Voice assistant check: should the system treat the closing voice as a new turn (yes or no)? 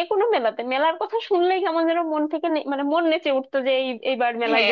yes